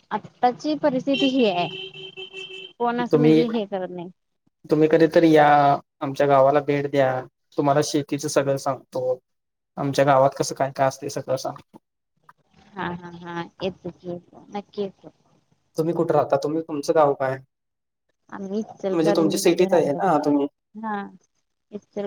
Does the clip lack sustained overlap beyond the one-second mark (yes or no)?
no